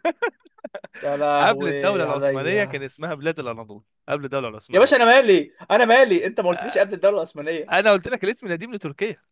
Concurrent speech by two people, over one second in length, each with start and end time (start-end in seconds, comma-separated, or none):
1.4-2.9